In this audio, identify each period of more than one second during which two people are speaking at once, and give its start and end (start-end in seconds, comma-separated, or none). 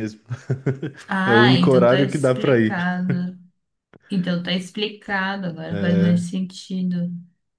1.2-2.9